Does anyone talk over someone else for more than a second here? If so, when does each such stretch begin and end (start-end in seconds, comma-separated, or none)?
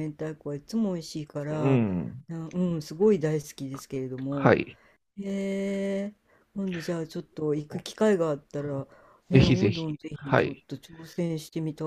9.3-10.7